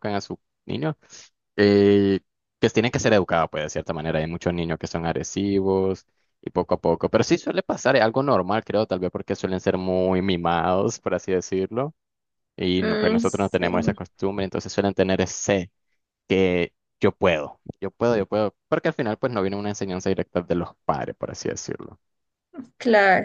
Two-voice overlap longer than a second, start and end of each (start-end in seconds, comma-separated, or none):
12.8-14.0